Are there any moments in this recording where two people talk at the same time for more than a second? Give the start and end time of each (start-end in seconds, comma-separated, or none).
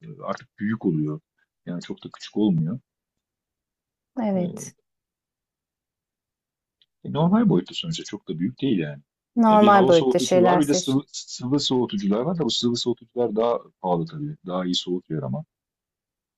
9.5-11.0